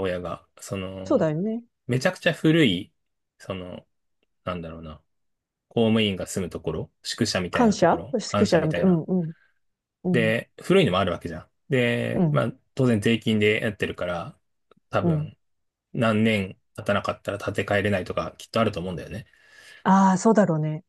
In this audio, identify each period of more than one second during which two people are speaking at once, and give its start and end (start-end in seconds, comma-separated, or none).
7.5-9.0